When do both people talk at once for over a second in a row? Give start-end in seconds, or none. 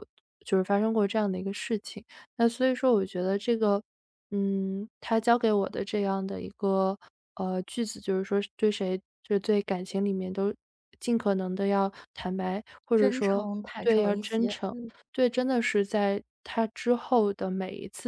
12.9-14.8